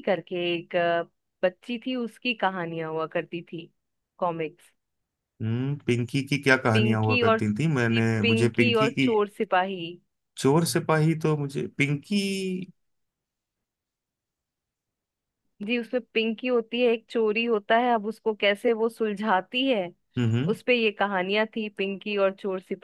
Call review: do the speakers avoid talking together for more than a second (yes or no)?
no